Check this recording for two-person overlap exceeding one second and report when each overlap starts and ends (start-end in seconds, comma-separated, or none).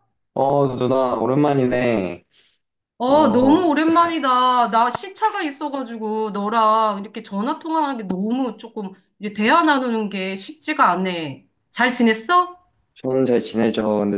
none